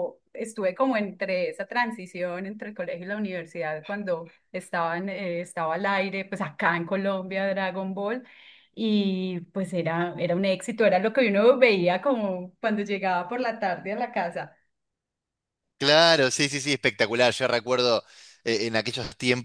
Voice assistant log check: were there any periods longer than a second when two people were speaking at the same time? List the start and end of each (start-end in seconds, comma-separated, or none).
none